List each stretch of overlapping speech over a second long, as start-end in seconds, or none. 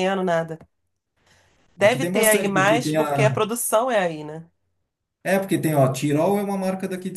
1.8-3.4